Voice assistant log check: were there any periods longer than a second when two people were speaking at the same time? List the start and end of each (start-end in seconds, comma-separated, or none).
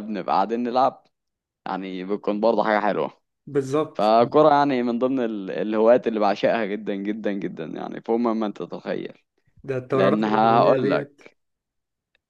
9.9-11.2